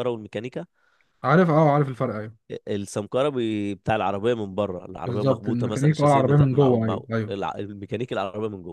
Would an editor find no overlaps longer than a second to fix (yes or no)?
no